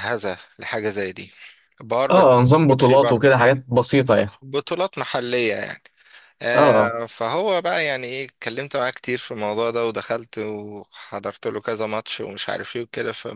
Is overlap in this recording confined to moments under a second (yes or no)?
no